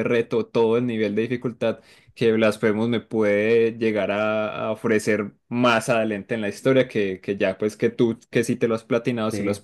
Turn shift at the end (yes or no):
no